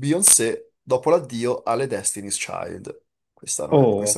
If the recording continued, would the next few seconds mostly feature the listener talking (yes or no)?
yes